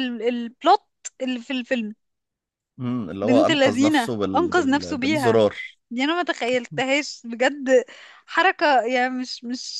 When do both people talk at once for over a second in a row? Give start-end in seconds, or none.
3.2-5.4